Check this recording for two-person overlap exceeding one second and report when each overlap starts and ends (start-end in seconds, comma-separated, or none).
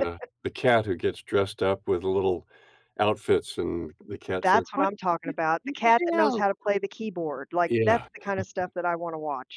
4.4-6.4